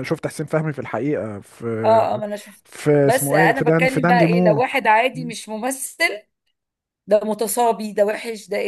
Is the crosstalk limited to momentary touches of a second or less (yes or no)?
no